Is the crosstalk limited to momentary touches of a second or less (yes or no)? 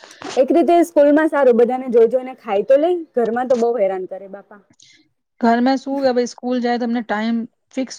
yes